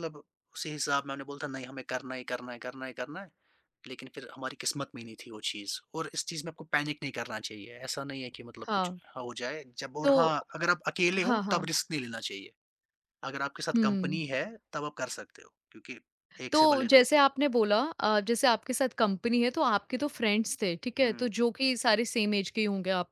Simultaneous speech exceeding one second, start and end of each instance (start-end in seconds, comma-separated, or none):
none